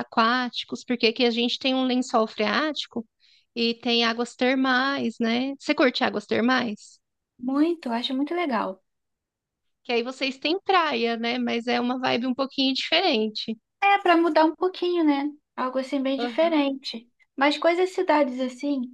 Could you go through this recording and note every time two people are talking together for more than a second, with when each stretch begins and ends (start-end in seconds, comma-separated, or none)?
none